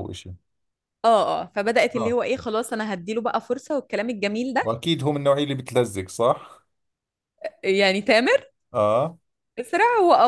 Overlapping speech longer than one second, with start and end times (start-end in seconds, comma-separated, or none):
none